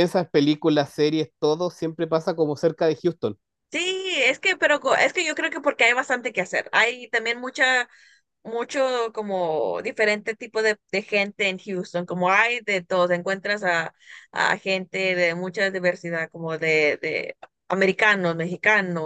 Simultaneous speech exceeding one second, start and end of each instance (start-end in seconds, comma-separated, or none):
none